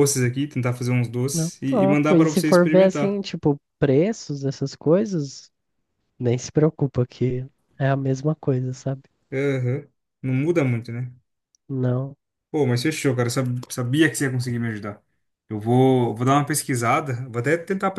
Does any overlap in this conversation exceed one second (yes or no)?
yes